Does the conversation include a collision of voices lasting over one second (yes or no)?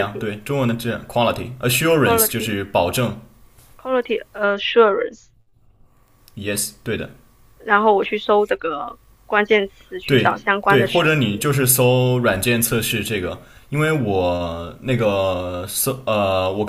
yes